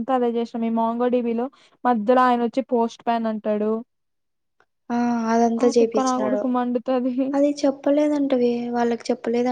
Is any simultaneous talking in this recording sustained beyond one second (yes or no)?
no